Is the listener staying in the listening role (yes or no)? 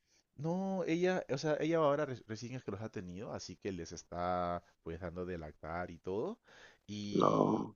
yes